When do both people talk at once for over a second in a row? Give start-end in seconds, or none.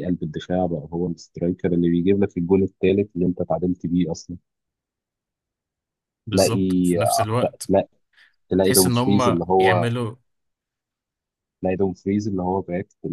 8.6-9.9